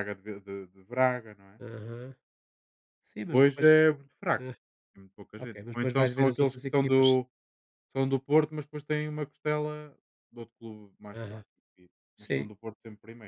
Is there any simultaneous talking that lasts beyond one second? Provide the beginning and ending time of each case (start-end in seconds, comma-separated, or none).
5.4-7.2